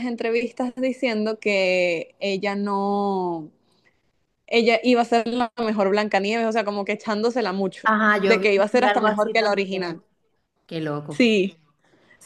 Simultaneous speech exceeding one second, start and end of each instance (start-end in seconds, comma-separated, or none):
7.8-10.0